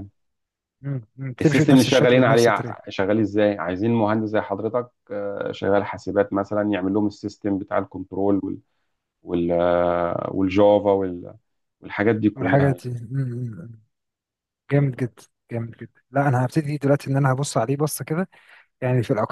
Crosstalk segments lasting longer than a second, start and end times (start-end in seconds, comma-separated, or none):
1.4-2.8